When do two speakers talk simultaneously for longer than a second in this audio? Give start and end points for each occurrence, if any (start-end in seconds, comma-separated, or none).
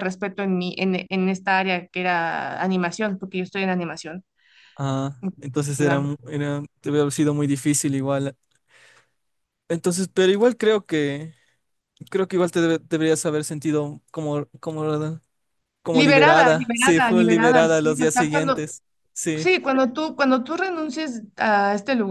15.9-18.6